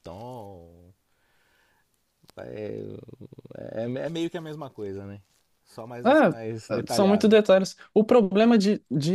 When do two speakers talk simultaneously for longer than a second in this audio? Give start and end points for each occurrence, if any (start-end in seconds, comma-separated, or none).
6.0-7.4